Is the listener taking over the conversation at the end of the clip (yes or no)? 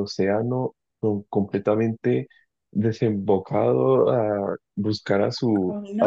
yes